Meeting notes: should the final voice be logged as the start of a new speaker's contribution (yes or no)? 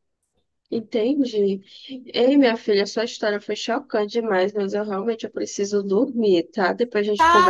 yes